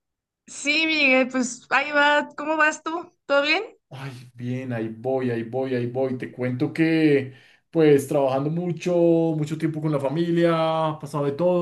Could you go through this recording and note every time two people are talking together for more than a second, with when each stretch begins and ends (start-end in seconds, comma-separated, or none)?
none